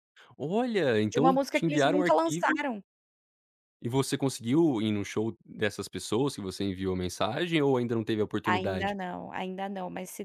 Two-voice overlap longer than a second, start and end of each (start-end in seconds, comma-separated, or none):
1.1-2.6